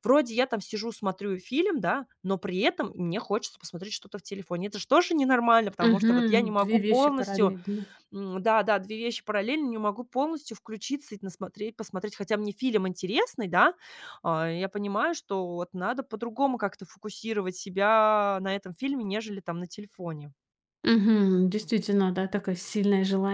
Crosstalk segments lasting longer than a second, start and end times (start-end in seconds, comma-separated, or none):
5.8-7.6